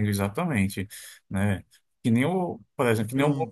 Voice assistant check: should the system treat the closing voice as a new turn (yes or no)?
no